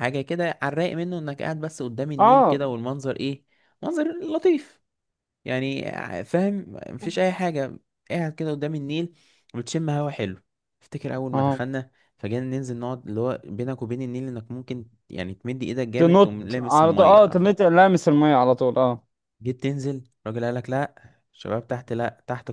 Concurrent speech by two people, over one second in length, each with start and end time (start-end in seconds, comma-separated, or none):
16.0-17.5